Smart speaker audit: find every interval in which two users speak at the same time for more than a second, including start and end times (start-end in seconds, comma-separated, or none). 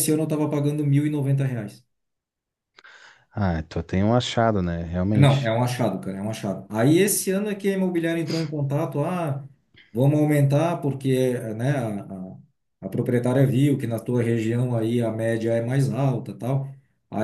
none